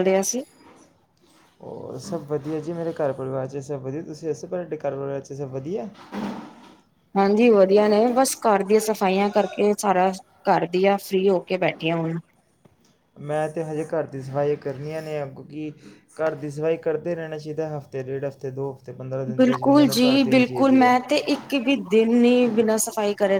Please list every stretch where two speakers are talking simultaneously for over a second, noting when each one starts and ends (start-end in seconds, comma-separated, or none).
19.4-21.0